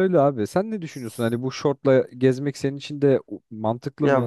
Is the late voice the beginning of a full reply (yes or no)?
yes